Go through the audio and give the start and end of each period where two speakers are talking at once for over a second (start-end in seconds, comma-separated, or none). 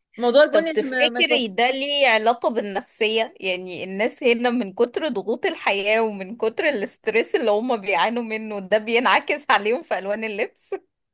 0.5-1.7